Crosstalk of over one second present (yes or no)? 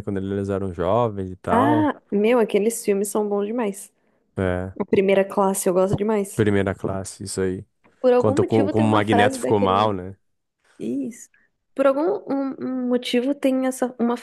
yes